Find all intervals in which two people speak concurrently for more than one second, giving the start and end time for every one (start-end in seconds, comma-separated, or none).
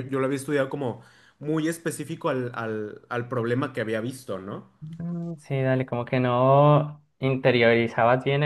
none